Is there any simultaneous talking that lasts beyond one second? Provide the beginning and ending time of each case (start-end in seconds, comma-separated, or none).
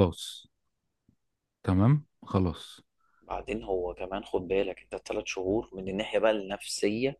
none